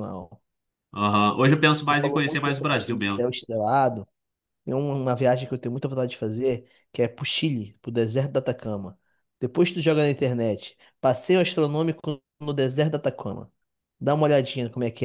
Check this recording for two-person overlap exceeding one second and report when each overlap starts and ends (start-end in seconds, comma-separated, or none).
1.9-3.3